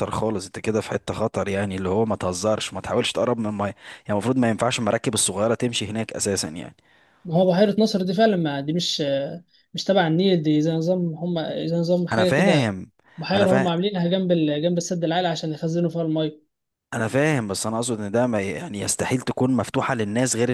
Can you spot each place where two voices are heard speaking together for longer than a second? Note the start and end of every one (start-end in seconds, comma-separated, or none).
none